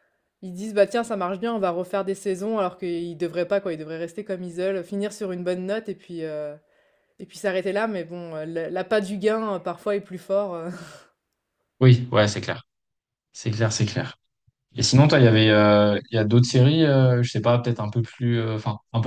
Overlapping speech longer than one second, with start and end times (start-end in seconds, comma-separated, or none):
none